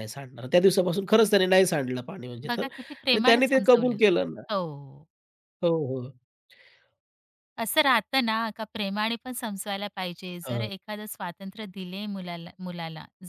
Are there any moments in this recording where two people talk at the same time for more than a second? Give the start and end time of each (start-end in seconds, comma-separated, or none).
2.5-4.0